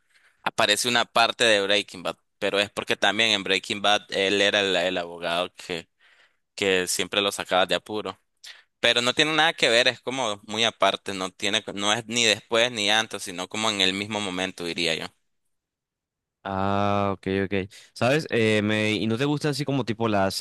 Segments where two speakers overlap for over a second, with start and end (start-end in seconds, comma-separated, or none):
none